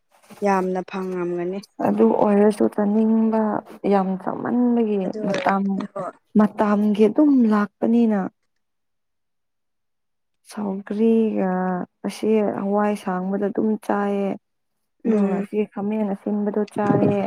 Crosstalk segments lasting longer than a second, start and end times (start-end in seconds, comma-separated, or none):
none